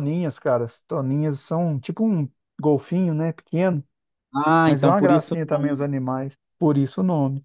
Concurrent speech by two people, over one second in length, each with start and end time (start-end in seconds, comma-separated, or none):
4.7-5.9